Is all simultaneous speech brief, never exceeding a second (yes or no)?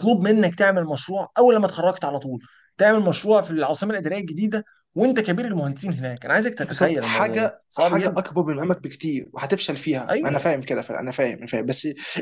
no